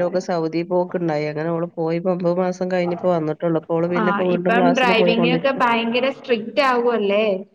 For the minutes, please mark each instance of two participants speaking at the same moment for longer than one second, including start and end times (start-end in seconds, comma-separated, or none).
4.0-5.6